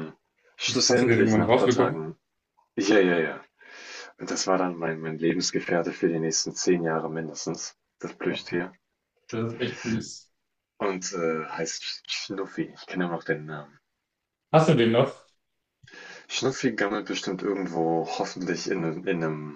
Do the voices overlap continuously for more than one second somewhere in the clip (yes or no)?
yes